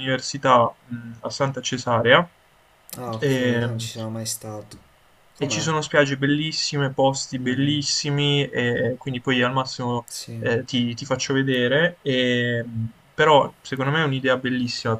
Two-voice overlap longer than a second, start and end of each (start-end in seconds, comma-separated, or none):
none